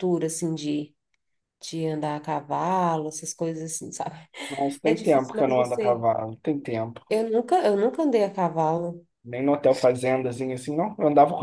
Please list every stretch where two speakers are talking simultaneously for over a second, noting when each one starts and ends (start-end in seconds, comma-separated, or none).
4.8-6.0